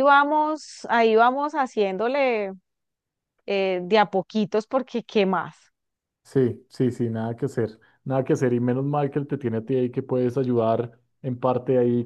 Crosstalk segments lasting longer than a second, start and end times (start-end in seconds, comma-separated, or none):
none